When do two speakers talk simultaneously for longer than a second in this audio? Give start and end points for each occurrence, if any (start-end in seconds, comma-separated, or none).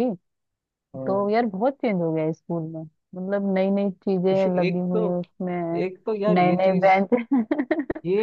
none